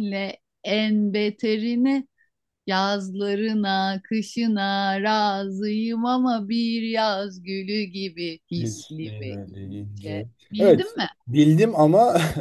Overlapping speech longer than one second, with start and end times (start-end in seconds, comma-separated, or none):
8.6-11.1